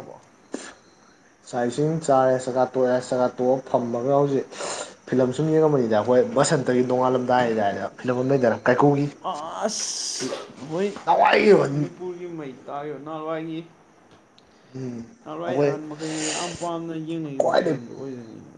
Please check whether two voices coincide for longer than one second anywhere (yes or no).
no